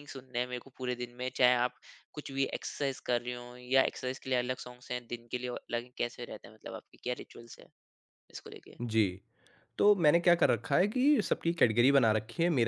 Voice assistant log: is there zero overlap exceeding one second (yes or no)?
yes